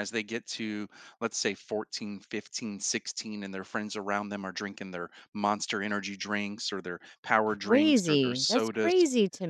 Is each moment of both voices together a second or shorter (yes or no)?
no